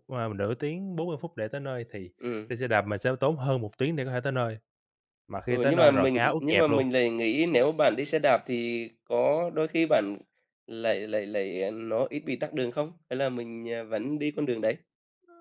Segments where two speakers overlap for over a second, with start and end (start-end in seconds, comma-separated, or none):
5.5-6.8